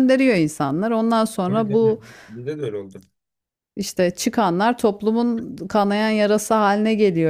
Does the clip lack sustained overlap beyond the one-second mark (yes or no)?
yes